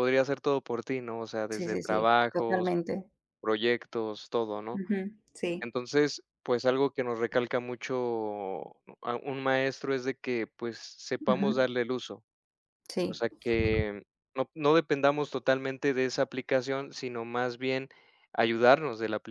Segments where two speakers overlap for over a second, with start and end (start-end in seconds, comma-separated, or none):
1.5-2.7